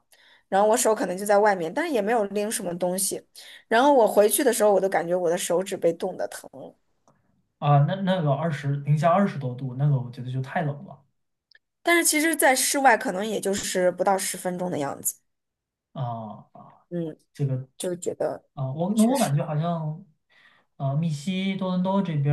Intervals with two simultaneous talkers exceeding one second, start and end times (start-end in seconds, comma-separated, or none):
none